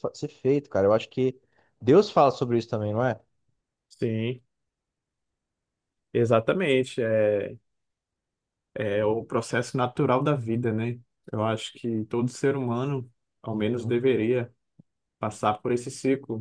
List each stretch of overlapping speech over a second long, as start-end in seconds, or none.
none